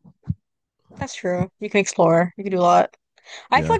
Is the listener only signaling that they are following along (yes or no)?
yes